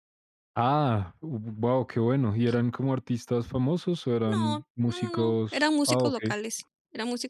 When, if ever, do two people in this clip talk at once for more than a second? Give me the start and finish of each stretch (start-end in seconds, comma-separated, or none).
4.2-6.2